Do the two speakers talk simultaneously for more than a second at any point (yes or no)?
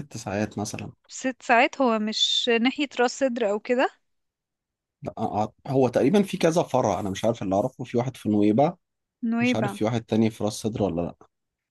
no